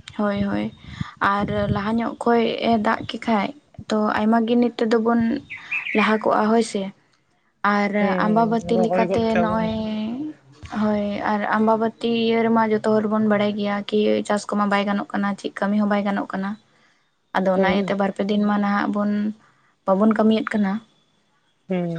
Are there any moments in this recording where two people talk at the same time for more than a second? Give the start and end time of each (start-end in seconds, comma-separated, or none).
8.0-9.6